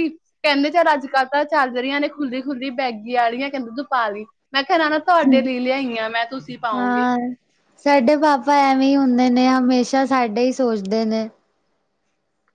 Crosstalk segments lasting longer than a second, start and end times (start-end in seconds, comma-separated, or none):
none